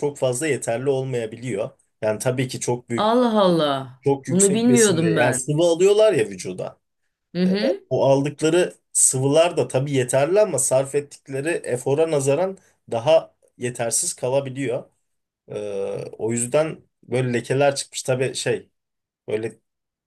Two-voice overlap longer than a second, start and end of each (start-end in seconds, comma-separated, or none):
4.0-5.5